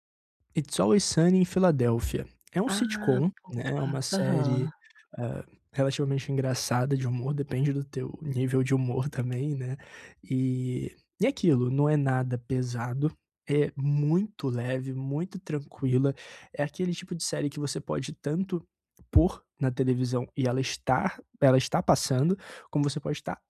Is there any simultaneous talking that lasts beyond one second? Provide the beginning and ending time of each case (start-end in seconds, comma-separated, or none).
2.7-4.7